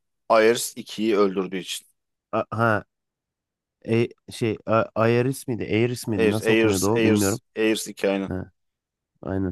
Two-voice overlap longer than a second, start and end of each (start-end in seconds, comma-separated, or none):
6.2-7.4